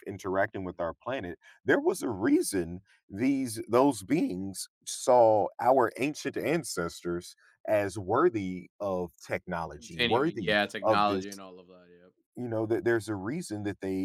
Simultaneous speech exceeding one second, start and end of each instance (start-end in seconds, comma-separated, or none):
9.8-11.2